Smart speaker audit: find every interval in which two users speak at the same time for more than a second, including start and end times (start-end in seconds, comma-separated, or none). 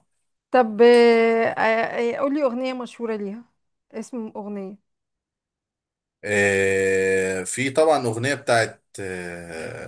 none